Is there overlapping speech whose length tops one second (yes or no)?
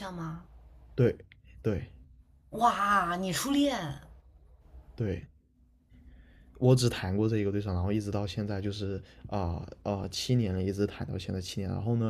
no